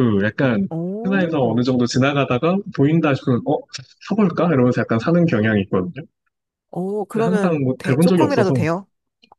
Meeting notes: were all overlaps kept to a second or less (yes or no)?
no